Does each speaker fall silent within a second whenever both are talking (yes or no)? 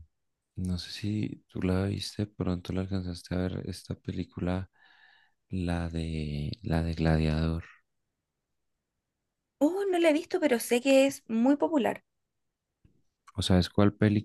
yes